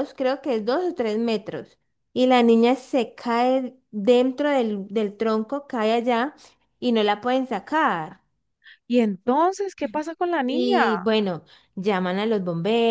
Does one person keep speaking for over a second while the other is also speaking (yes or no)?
no